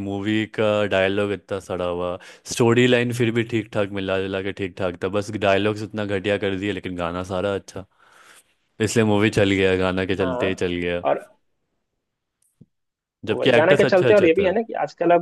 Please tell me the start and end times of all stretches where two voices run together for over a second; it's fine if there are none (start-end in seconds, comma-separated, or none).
13.3-14.5